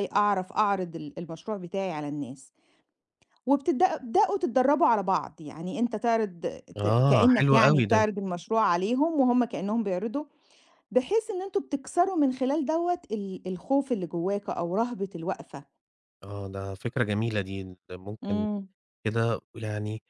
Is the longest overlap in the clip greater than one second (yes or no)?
yes